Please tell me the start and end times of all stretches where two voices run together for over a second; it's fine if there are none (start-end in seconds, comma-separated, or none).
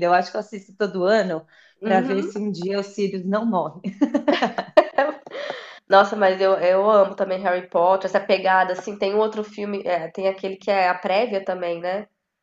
none